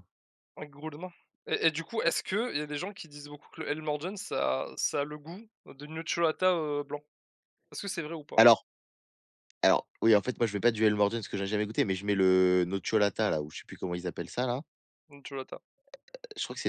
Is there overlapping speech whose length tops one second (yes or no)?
no